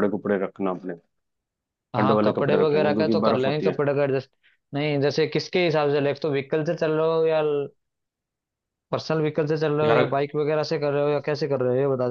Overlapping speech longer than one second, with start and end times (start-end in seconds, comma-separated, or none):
2.0-3.8